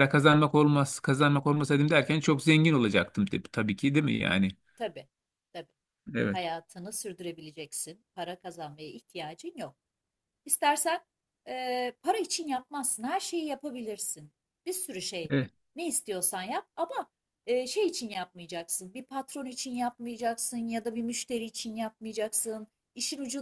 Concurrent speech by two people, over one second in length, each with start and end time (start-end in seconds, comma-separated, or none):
none